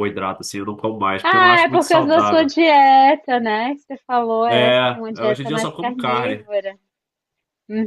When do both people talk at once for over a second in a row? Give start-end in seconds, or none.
1.2-2.5, 4.5-6.5